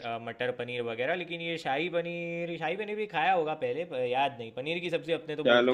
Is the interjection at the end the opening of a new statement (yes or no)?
yes